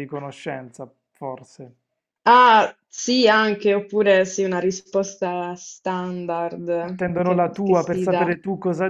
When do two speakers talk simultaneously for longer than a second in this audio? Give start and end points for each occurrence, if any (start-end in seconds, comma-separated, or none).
6.8-8.3